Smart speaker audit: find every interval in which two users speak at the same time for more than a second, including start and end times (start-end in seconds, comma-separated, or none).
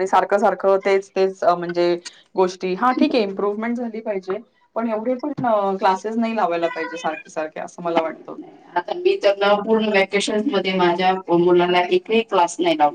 none